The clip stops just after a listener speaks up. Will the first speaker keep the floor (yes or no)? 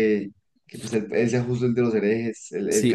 no